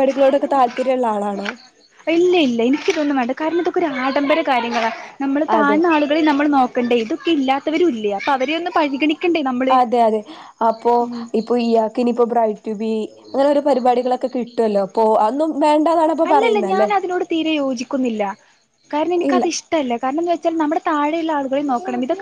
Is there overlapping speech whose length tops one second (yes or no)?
no